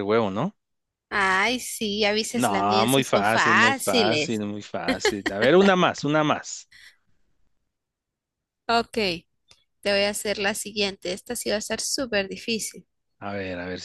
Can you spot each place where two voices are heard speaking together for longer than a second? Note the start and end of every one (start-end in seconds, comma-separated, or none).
2.4-4.4